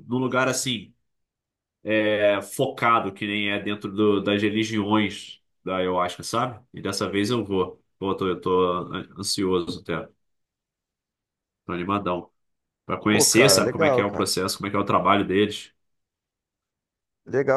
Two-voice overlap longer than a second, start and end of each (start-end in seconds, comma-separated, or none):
13.1-14.3